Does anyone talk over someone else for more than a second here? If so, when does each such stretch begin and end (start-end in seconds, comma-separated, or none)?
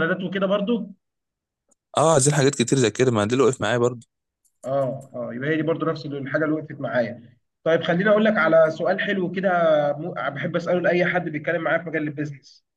none